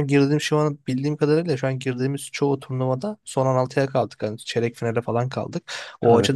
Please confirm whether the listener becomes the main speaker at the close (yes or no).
no